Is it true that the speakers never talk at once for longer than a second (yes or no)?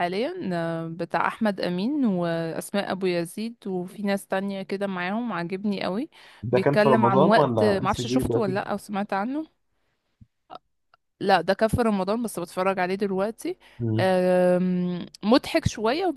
no